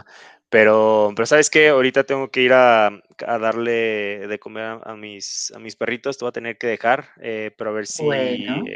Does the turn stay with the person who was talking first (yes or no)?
yes